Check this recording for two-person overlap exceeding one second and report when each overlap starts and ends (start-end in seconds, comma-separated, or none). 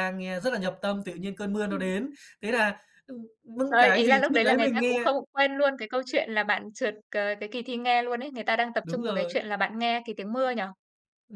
3.7-5.0